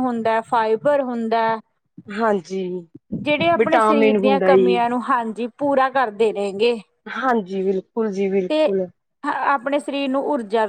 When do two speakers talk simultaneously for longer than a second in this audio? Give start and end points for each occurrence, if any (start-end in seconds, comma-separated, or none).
3.6-4.8